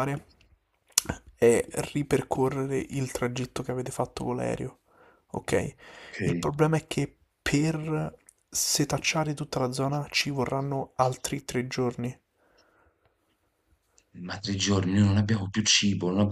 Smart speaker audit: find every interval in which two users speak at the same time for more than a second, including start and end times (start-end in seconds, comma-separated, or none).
none